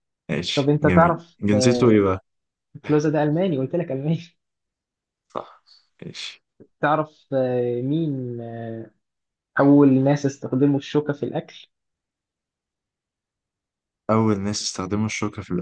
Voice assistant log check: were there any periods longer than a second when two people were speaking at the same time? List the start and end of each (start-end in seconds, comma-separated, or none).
0.5-2.0